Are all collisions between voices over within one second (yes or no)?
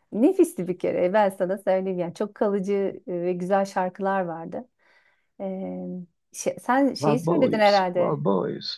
no